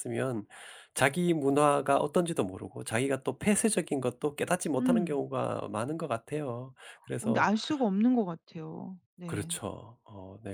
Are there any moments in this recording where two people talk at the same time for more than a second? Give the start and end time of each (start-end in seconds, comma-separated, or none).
none